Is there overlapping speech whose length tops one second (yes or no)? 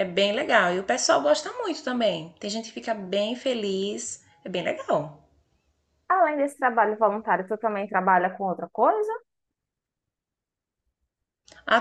no